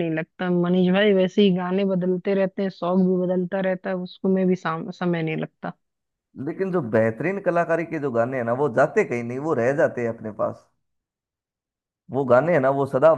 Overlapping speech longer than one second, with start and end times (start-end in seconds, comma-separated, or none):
none